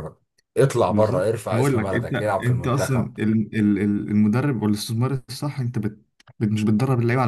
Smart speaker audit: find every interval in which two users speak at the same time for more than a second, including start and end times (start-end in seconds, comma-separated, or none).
0.9-3.1